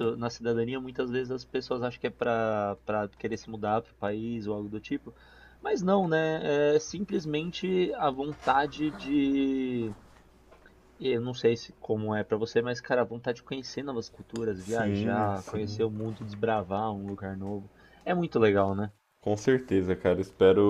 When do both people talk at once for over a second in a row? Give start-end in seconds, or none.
14.6-15.8